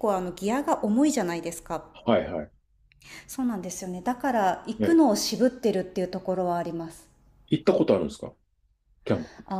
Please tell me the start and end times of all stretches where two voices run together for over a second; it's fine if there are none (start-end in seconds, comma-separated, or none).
none